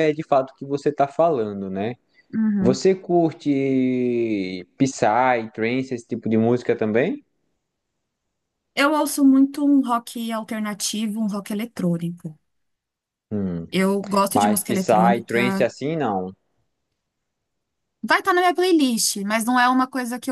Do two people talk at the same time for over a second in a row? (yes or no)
yes